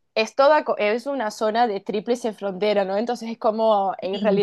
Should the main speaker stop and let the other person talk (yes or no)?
no